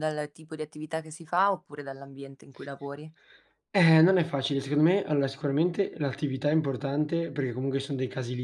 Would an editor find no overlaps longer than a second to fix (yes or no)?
yes